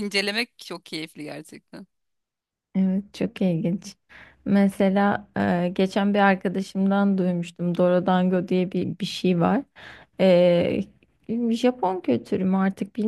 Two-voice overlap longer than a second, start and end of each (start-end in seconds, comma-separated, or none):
none